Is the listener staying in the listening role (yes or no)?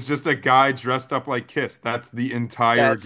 no